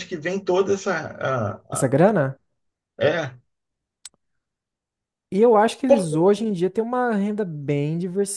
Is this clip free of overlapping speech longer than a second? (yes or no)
yes